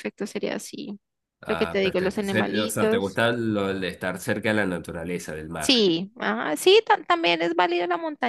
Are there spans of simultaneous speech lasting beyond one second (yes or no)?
yes